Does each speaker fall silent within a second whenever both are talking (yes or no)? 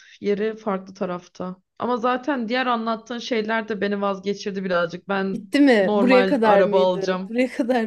no